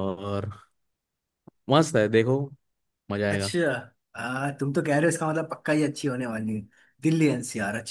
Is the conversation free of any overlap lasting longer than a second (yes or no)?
yes